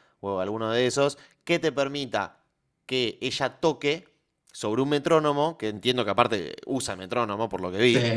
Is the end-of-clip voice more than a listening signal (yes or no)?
no